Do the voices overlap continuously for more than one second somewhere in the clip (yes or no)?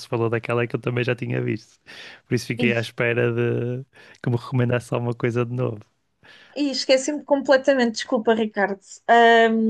no